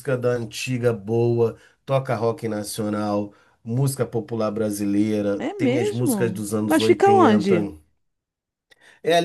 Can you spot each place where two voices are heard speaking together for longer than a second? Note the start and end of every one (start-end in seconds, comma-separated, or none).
5.4-7.5